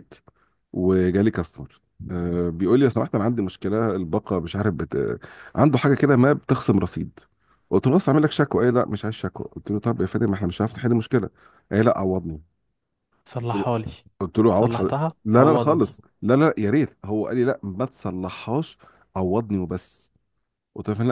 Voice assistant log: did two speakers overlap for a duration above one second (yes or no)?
yes